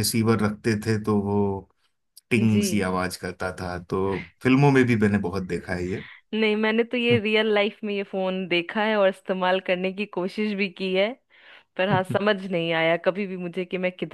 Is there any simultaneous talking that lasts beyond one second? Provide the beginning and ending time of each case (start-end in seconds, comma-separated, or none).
none